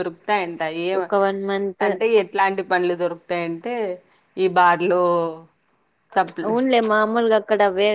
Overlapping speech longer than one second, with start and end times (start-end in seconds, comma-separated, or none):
none